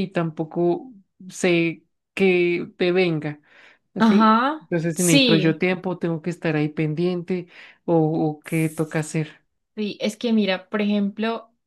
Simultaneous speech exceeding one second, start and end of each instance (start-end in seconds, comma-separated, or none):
4.0-5.6